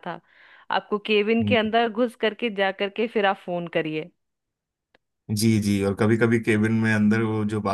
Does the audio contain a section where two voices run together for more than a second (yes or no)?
no